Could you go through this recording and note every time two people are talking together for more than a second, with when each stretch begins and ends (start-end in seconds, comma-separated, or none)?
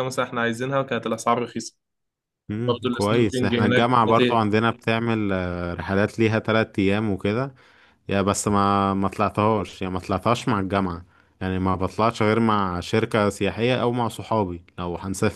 2.7-4.5